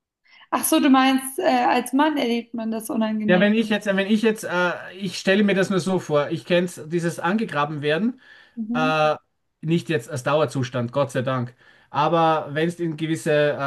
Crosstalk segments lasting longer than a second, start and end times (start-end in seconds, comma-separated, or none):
none